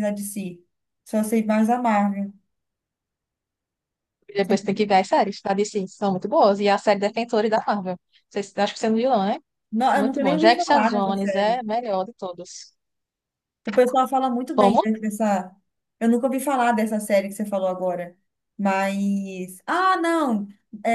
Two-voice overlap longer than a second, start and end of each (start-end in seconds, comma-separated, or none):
9.9-11.6